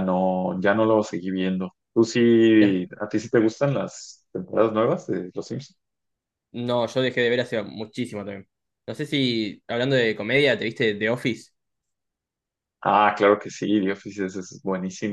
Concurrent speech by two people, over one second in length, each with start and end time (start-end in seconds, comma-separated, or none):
none